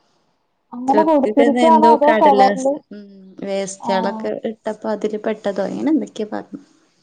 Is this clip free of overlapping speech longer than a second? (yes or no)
no